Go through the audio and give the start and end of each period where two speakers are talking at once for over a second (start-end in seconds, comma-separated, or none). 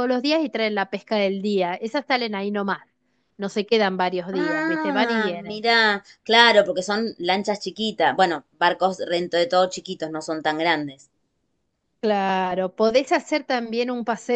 4.3-5.7